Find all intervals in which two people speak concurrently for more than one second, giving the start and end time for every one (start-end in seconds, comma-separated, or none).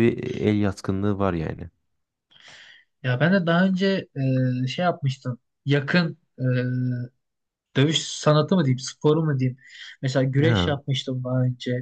none